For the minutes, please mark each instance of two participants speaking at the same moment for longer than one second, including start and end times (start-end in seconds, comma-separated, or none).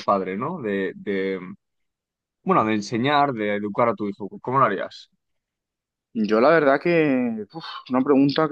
none